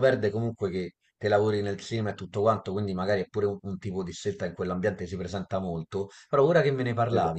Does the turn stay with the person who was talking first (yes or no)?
yes